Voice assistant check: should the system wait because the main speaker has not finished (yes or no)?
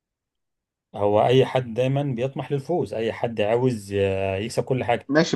no